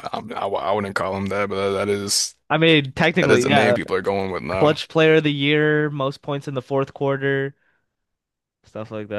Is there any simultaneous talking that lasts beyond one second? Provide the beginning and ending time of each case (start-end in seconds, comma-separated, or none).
none